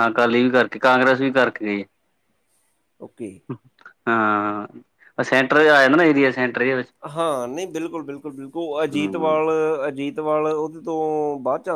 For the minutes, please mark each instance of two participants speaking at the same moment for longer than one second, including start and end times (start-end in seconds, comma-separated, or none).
none